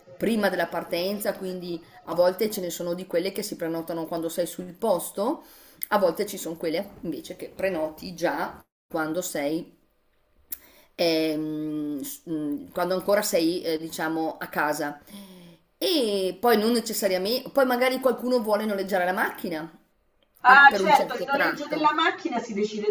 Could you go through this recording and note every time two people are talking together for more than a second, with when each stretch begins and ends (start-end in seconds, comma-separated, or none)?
20.4-22.0